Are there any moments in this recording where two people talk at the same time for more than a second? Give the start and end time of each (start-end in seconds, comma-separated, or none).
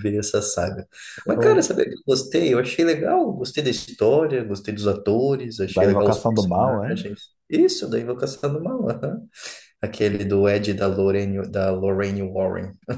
5.6-7.0